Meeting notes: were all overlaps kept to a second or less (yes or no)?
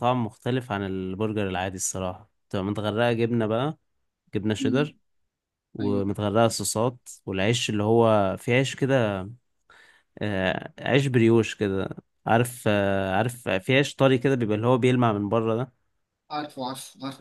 yes